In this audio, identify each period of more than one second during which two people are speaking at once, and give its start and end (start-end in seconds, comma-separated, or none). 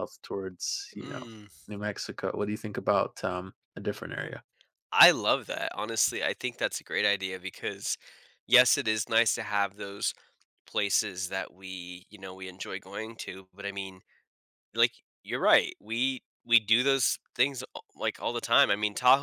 none